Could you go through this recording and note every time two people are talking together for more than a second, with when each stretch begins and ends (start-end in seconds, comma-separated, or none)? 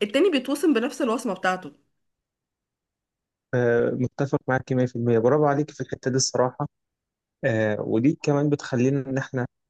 none